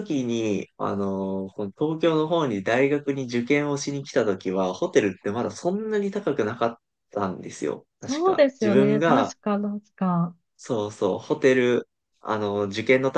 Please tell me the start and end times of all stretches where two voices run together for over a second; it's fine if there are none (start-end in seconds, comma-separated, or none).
8.0-9.3